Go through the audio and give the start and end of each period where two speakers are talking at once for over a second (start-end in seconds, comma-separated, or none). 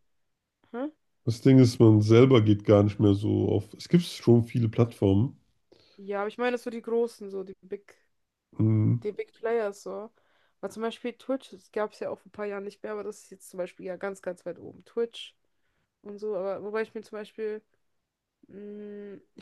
none